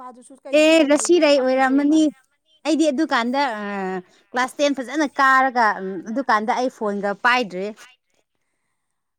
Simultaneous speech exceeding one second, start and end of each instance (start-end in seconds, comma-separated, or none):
0.5-2.0